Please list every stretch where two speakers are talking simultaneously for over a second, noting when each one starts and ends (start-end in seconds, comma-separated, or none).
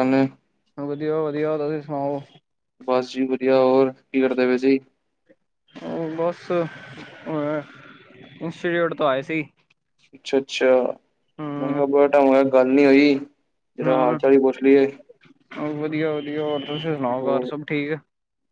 none